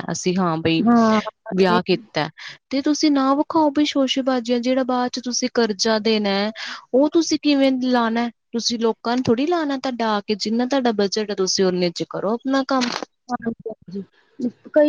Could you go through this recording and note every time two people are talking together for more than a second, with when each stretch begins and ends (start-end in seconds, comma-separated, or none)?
none